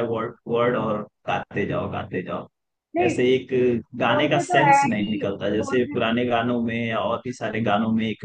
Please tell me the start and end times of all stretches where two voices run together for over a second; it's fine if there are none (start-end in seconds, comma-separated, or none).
4.1-6.0